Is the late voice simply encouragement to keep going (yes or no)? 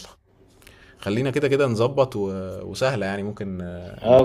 no